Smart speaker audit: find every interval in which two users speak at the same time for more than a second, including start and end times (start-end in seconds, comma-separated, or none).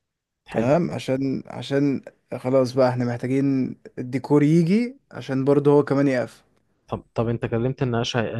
none